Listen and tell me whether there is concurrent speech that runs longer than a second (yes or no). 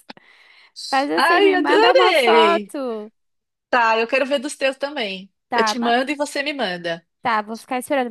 yes